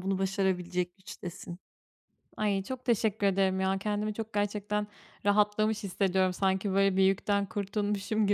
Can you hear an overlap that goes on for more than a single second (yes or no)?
no